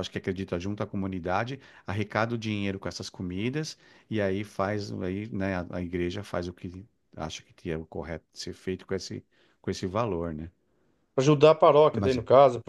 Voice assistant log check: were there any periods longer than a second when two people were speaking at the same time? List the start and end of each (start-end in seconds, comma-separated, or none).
none